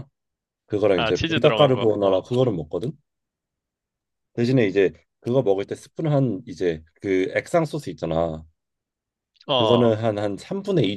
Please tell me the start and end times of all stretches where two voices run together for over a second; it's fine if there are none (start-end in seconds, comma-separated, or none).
0.9-2.2